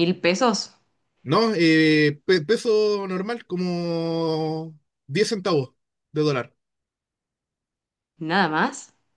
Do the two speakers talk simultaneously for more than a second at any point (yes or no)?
no